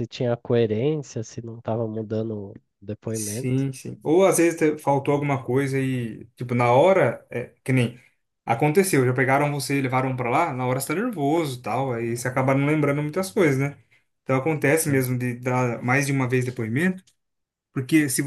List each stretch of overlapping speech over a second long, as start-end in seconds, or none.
none